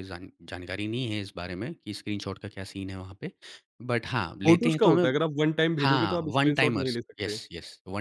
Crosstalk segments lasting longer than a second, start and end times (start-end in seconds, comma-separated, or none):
5.8-7.4